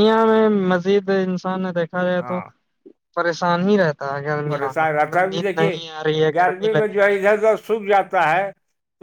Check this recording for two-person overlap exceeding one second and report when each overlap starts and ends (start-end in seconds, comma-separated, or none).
4.5-5.8